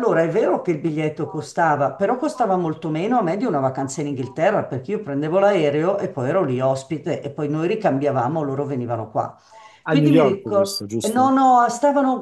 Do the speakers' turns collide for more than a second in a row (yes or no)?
yes